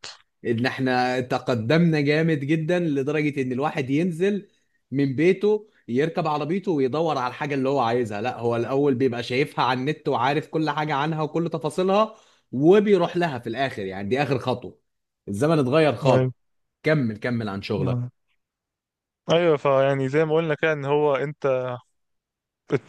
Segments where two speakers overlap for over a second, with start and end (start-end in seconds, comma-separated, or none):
none